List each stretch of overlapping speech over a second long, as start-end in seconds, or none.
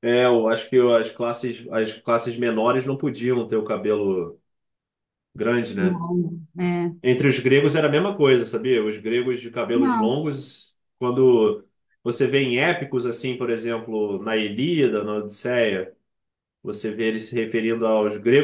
none